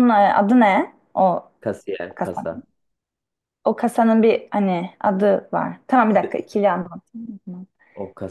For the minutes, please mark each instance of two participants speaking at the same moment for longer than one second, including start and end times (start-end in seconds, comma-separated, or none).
none